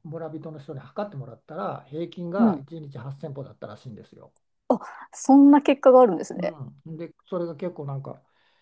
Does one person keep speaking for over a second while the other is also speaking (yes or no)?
no